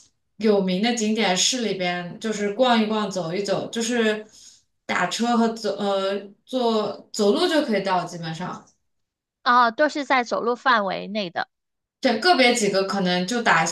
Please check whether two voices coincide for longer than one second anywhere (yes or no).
no